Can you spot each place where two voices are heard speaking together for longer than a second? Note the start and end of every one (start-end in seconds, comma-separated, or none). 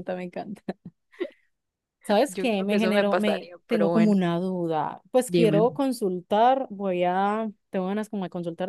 2.3-4.2